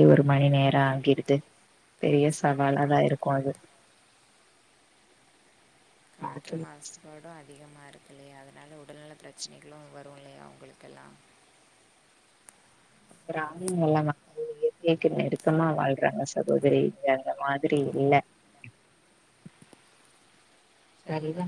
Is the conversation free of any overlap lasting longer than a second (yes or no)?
yes